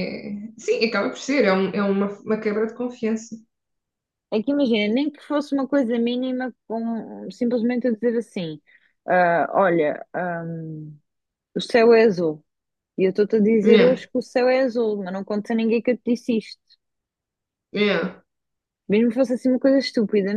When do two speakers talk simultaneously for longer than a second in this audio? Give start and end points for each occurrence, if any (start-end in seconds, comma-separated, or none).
none